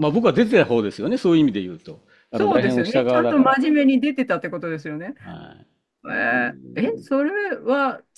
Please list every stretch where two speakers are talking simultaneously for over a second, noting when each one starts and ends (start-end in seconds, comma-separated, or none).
2.3-3.6